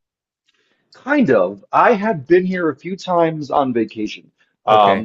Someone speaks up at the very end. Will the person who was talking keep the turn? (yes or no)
yes